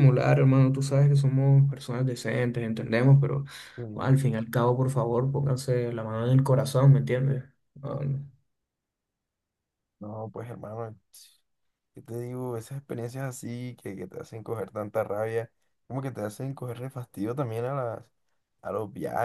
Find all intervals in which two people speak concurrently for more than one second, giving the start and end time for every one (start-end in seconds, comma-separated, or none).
none